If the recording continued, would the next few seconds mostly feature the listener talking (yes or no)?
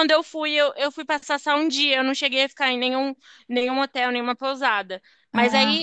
no